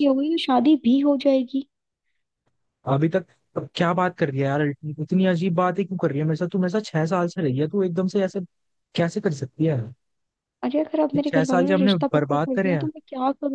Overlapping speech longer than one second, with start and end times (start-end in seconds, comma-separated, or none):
11.2-12.9